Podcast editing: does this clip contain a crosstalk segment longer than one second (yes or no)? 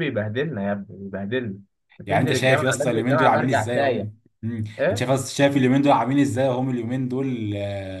yes